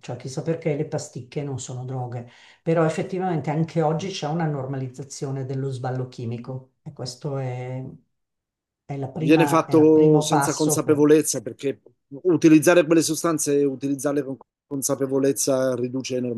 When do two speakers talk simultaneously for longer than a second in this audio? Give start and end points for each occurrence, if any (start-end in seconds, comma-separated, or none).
9.2-11.0